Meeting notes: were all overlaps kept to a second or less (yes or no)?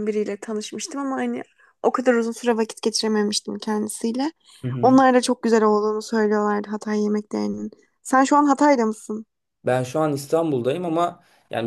yes